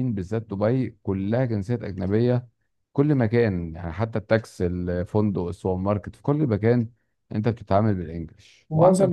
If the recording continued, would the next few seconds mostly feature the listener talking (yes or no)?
yes